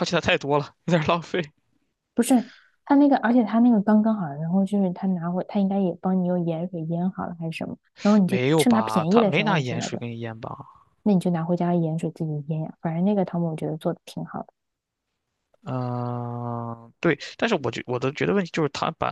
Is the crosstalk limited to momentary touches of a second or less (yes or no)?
no